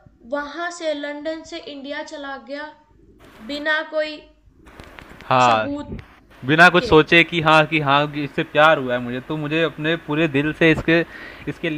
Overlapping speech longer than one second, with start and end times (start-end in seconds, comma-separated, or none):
none